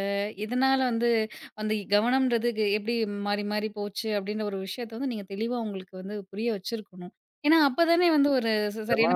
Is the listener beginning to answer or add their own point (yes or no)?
yes